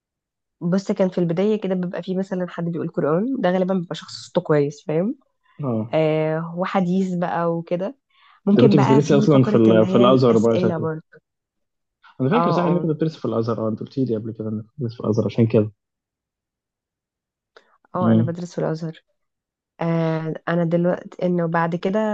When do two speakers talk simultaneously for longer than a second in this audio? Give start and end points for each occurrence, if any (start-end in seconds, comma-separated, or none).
8.6-10.9